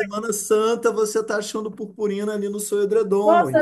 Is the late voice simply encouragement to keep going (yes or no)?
no